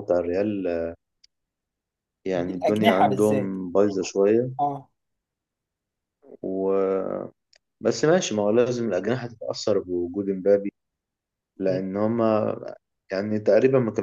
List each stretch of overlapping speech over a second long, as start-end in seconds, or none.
2.3-3.5